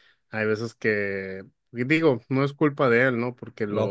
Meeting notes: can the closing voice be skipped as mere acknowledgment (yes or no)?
yes